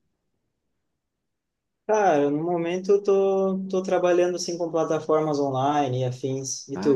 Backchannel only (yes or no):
no